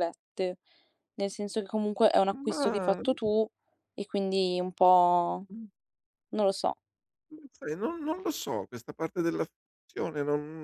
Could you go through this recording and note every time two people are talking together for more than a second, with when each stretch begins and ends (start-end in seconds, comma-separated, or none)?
none